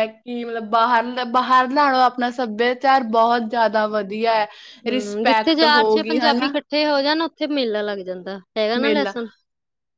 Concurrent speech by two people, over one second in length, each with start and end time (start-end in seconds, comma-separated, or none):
4.9-6.5